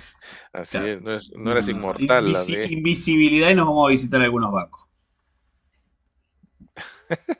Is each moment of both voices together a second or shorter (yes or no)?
no